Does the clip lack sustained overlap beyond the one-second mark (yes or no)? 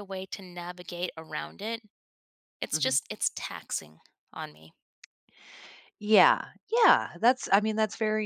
yes